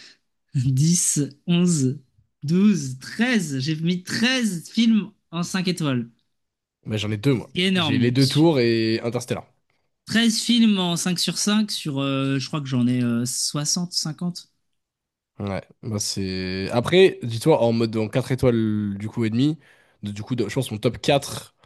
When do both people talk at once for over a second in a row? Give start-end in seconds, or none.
none